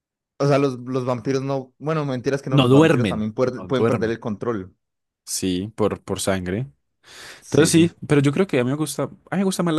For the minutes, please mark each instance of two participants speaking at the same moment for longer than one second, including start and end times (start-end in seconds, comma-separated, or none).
2.5-4.2